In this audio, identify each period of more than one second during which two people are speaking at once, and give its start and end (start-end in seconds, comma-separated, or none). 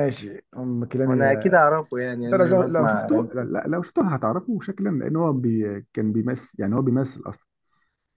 2.2-3.5